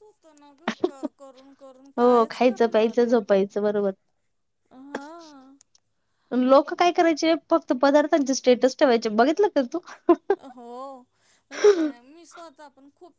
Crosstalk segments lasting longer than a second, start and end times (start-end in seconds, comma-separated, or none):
2.0-3.4